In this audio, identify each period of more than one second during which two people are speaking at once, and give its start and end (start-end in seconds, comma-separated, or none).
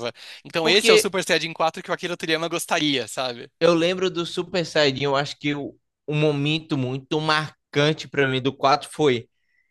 none